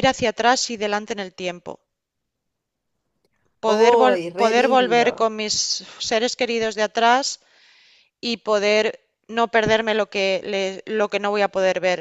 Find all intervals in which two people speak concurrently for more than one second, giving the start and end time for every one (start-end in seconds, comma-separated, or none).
3.6-5.3